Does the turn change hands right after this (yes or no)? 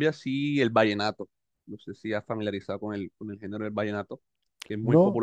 no